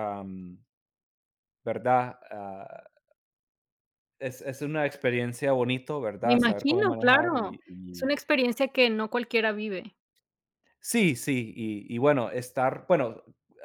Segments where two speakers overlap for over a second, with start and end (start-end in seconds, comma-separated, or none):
6.2-8.1